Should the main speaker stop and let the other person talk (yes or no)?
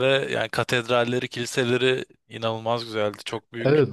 yes